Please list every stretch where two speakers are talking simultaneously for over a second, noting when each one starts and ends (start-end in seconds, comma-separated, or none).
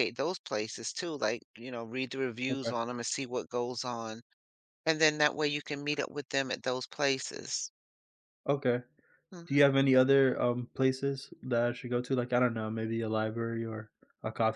none